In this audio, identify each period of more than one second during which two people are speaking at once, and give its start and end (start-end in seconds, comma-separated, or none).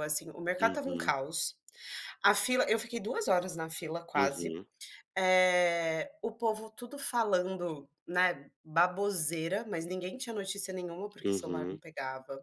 none